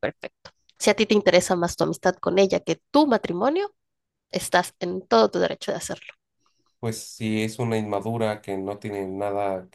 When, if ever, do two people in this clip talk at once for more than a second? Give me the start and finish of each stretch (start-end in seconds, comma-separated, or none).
none